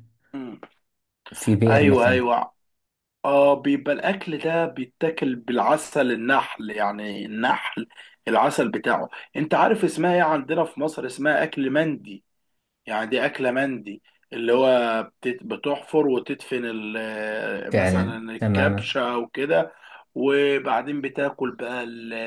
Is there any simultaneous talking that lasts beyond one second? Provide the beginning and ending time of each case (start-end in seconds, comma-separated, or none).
17.7-18.9